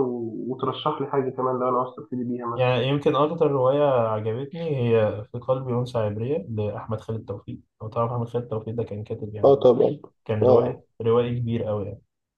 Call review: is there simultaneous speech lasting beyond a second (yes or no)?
no